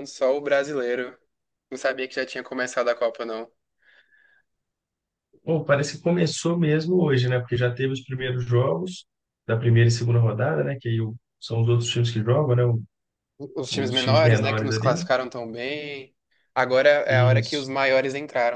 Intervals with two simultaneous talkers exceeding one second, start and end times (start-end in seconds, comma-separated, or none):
13.7-15.0